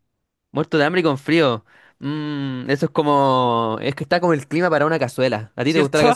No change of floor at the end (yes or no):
no